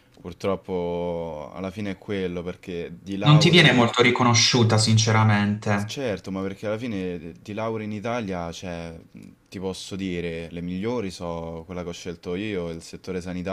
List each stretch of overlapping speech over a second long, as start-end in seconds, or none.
none